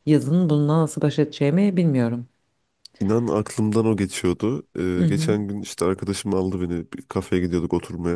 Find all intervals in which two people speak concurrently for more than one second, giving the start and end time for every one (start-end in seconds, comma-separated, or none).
none